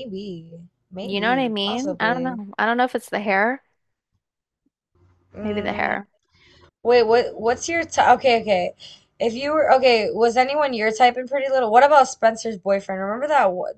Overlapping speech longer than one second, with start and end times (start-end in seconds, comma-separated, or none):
1.0-2.4